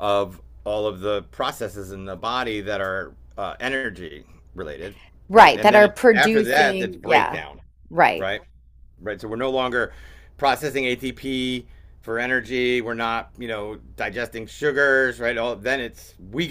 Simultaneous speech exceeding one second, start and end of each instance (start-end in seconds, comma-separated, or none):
5.3-7.4